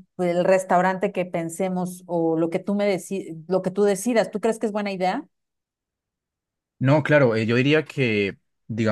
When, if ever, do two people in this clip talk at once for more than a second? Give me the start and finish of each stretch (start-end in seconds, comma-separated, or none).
none